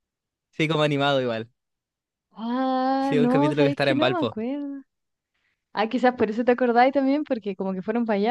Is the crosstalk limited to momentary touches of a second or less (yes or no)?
no